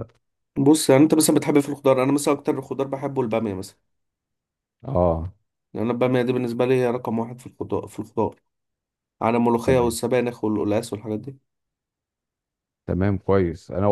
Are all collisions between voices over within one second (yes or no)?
yes